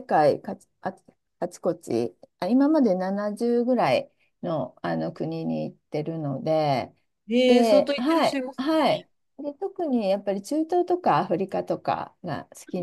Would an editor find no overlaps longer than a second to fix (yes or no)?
no